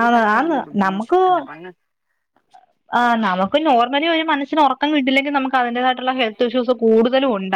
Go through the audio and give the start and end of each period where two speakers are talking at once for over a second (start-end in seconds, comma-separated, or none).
none